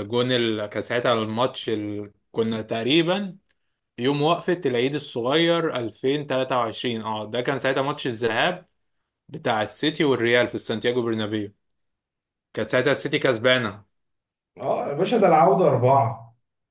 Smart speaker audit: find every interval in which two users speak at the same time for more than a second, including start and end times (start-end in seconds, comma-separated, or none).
none